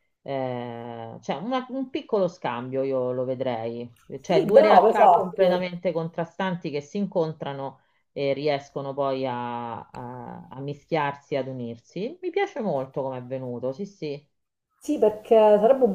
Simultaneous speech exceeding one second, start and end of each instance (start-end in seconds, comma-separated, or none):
4.3-5.7